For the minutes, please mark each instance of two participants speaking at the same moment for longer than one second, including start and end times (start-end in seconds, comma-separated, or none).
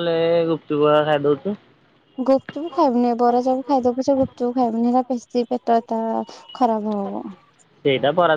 none